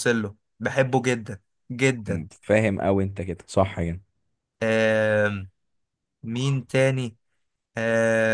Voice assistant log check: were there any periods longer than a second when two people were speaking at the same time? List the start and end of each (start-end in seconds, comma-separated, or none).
none